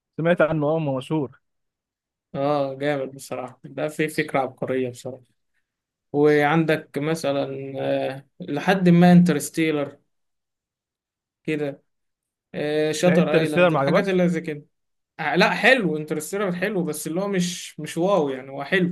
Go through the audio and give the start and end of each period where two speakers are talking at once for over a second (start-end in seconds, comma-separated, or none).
13.1-14.2